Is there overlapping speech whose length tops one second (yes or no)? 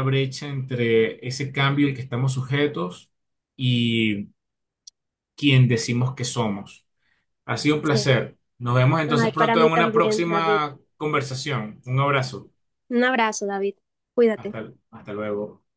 yes